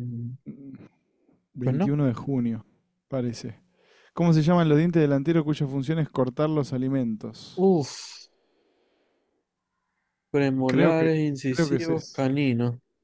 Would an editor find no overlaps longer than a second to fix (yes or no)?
no